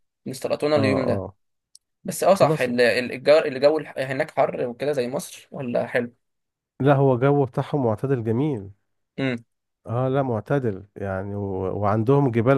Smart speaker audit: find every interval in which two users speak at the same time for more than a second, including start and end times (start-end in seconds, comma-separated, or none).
none